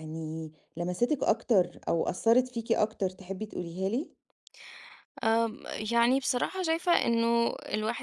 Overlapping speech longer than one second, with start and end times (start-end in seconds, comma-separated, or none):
none